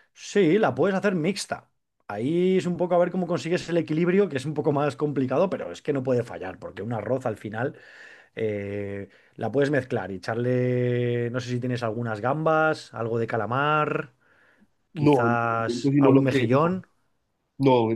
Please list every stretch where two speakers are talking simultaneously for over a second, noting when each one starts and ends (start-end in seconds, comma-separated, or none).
14.9-16.8